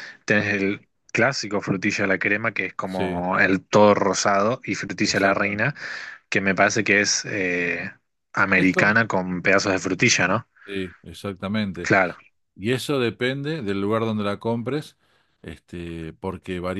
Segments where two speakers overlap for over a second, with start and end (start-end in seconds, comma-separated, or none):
none